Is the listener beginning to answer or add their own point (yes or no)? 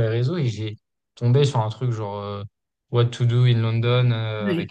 no